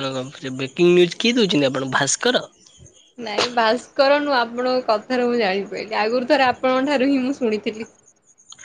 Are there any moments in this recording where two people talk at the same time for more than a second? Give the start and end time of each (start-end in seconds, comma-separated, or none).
none